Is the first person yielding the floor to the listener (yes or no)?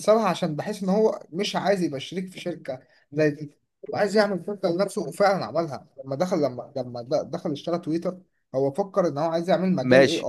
yes